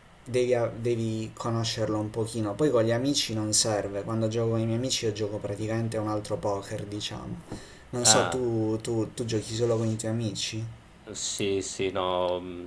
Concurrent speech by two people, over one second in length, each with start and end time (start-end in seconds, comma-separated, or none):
none